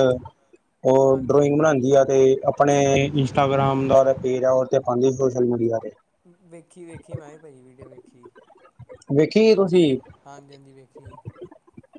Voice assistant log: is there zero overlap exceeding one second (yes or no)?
yes